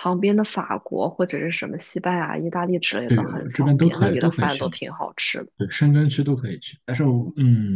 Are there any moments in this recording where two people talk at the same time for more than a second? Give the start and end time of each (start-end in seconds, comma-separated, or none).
3.1-4.7